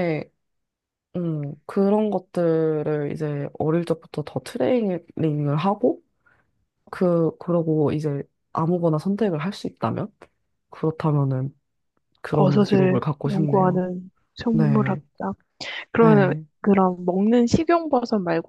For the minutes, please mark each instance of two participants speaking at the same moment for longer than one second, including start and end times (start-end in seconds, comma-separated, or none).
12.3-13.8